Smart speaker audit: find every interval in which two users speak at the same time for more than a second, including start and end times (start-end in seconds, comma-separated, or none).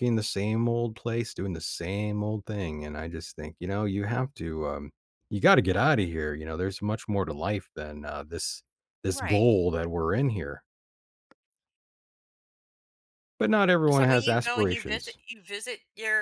13.9-15.2